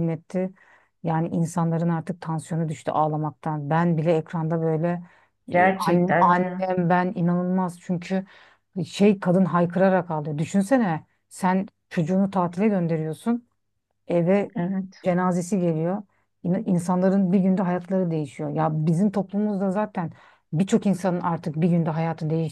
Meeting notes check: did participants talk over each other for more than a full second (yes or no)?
yes